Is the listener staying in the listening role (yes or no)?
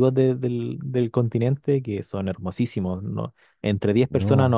yes